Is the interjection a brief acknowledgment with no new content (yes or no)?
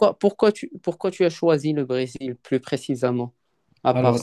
no